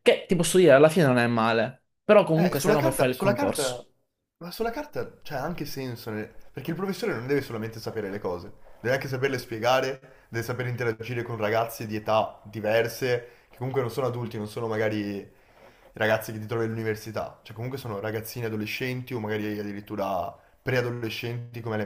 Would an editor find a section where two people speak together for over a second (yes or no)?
yes